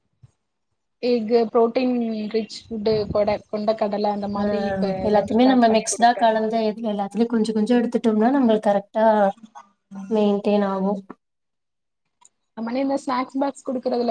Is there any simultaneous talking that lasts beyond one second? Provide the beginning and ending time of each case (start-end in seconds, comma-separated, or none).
none